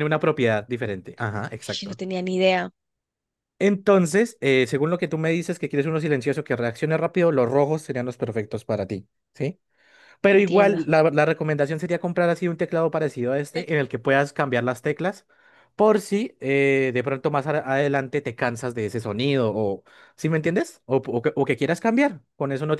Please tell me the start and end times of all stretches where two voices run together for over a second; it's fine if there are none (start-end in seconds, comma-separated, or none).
none